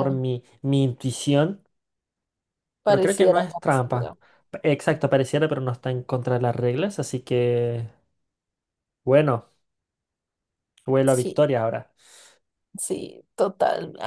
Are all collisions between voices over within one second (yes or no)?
no